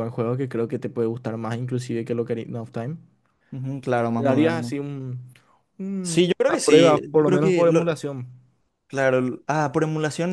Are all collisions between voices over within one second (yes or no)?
no